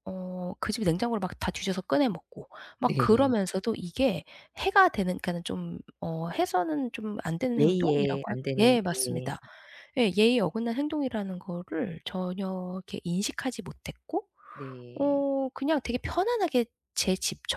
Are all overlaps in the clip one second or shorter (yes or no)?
no